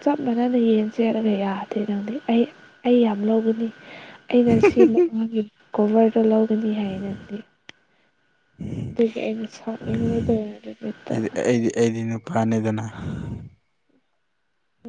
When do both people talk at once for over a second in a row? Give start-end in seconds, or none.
none